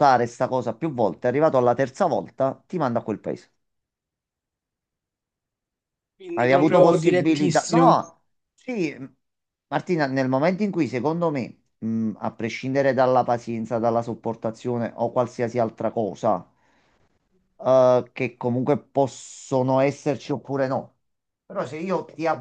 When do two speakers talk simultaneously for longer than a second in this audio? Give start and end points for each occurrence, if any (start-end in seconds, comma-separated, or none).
6.3-8.0